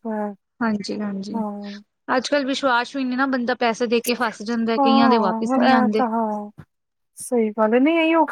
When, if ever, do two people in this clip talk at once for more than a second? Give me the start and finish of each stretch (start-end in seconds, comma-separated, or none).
none